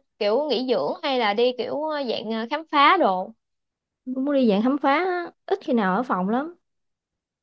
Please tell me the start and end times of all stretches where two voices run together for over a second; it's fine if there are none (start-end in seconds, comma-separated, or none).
none